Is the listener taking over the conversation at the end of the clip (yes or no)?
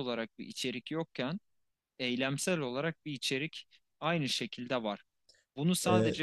no